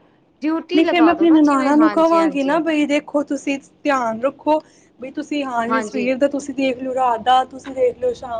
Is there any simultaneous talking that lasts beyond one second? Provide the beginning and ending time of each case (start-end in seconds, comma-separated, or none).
0.7-2.6